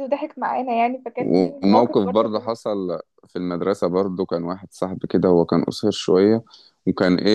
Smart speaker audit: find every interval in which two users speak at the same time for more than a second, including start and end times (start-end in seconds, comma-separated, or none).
1.2-2.5